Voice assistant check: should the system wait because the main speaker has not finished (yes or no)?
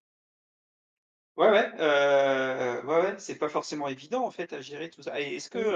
yes